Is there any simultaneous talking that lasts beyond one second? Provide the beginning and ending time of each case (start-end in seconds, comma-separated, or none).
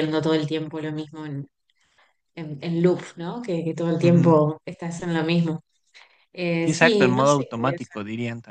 6.6-8.0